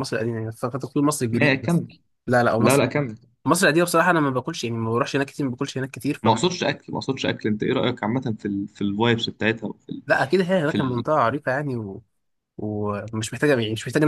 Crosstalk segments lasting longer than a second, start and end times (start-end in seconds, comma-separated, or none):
none